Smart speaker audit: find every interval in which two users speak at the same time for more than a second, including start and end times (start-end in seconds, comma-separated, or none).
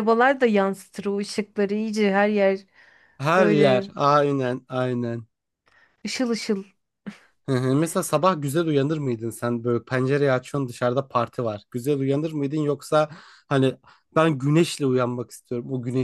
none